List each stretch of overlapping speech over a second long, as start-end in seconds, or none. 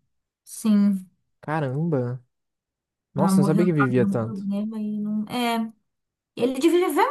3.2-4.5